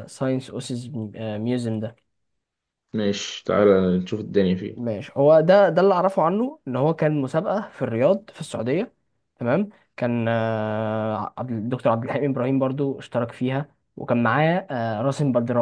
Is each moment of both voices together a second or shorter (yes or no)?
yes